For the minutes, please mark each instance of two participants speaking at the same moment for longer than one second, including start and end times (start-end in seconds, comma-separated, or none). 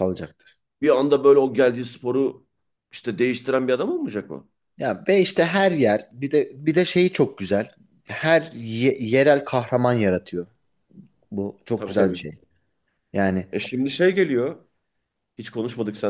none